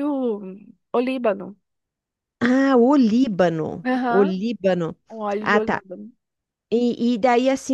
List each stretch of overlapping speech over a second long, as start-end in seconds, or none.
none